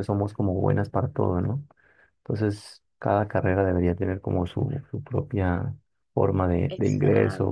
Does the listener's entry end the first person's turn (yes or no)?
no